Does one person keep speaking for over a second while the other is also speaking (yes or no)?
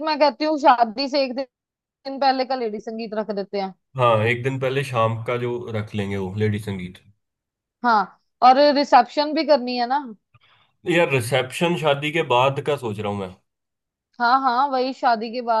no